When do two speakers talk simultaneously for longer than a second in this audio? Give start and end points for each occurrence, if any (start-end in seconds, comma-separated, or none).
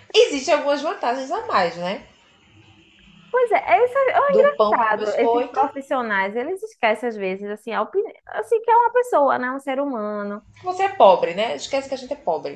4.3-5.6